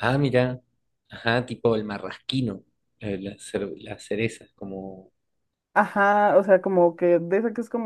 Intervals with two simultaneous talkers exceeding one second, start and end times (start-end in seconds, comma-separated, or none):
none